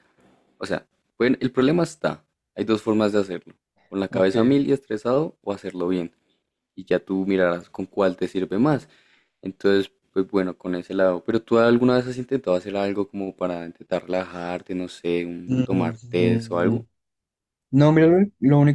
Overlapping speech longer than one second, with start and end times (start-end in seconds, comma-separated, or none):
15.5-16.8